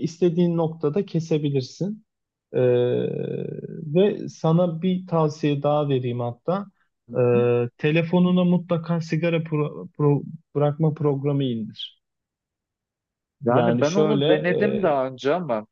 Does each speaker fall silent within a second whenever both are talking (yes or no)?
no